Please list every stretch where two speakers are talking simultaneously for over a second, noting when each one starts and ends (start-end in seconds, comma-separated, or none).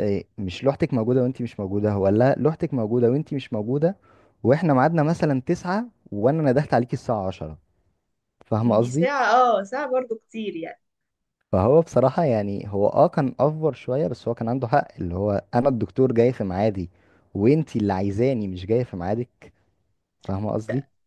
none